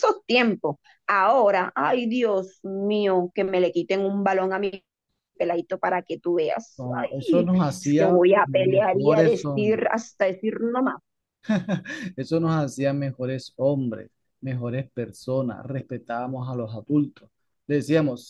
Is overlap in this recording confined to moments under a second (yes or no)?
no